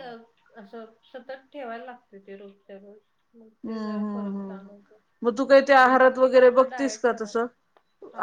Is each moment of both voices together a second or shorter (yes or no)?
no